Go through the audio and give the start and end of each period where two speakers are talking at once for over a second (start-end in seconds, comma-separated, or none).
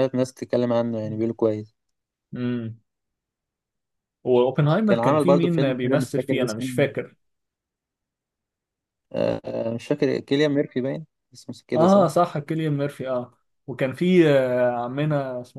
4.8-6.7